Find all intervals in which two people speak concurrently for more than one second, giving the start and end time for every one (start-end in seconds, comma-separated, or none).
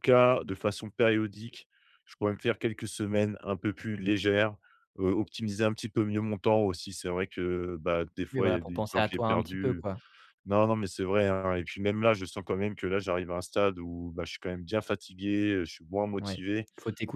8.3-9.8